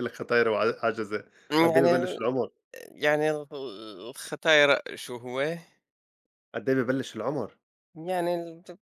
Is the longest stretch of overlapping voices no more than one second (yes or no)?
yes